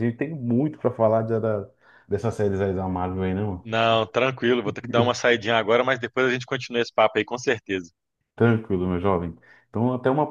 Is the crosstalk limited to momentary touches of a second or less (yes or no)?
yes